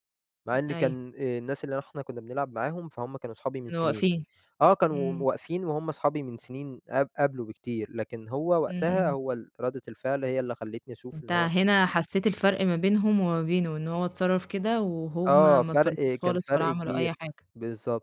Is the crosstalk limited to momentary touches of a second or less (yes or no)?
no